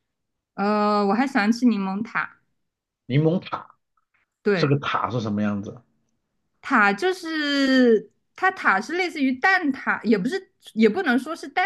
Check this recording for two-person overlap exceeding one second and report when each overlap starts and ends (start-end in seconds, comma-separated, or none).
none